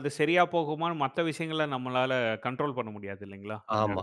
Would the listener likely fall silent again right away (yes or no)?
no